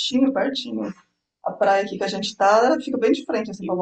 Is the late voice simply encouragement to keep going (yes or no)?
no